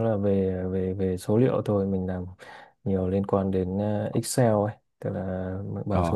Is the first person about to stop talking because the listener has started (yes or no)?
no